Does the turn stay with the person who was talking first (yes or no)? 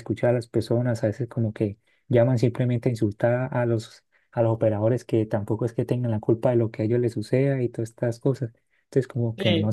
no